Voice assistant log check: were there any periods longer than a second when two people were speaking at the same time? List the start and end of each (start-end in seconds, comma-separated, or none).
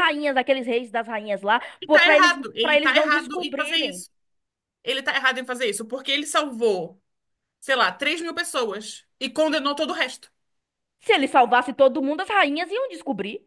1.8-4.0